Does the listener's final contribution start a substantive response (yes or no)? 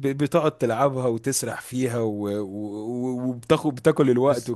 yes